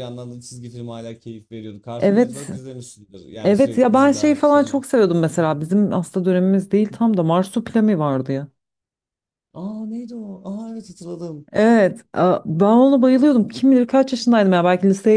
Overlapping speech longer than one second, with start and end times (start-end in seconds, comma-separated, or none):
3.4-4.8